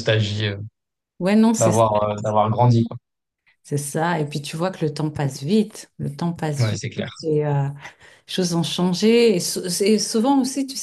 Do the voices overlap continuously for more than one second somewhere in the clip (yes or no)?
no